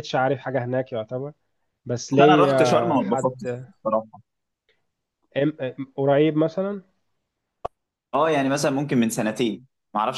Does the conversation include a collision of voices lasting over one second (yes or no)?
yes